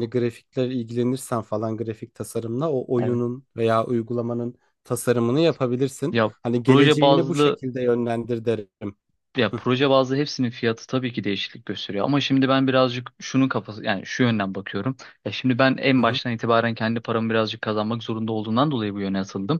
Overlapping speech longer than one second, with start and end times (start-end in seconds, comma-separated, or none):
6.1-7.6